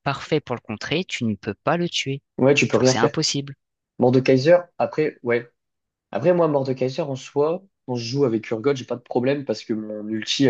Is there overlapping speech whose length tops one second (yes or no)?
no